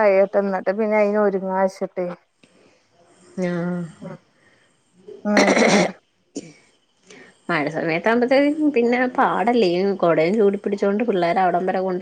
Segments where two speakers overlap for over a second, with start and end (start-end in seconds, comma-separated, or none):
none